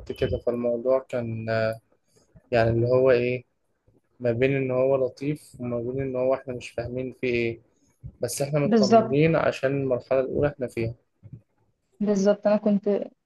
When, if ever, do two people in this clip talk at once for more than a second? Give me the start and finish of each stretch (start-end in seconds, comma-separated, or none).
none